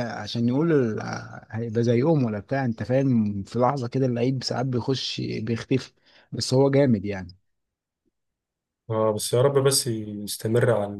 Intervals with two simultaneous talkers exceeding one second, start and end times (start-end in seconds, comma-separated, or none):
none